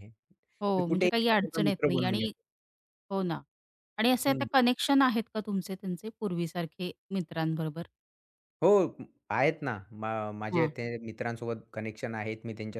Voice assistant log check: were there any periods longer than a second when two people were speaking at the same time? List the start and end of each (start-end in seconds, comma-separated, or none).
0.8-2.3